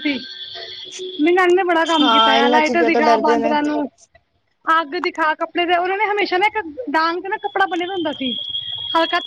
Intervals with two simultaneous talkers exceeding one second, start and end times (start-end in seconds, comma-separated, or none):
2.0-3.5